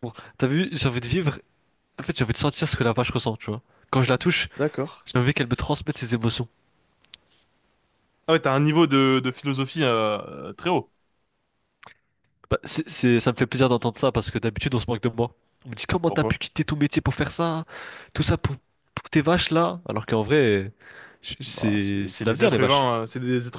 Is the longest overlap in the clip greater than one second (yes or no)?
yes